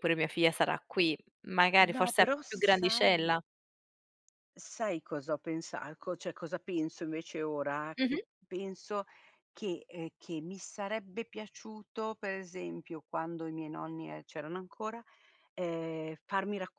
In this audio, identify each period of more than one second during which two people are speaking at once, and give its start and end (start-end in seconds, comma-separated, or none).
1.9-3.4